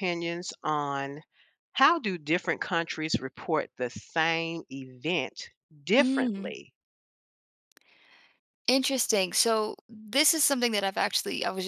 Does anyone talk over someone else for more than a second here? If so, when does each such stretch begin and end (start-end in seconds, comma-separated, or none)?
none